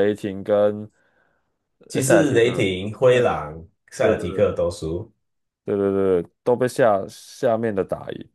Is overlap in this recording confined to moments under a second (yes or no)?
no